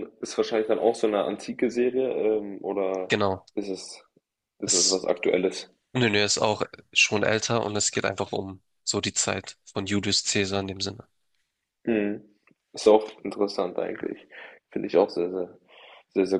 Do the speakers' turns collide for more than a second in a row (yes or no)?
no